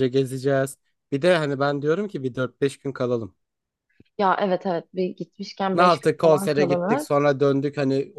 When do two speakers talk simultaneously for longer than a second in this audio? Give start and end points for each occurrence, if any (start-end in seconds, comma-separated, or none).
5.7-7.1